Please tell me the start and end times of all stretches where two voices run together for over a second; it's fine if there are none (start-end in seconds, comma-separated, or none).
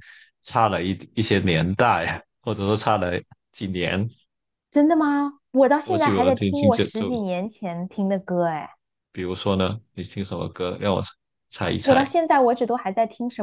5.8-7.1